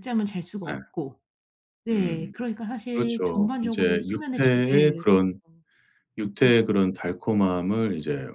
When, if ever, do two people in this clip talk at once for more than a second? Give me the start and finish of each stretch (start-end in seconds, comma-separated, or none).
2.9-5.0